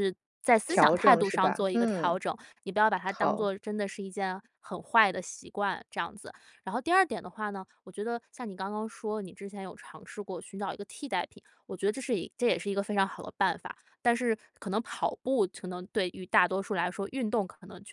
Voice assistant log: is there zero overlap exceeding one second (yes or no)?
no